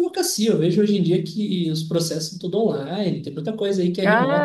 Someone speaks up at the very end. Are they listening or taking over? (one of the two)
taking over